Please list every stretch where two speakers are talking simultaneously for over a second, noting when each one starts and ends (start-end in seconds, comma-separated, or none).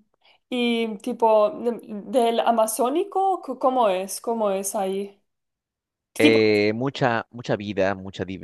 none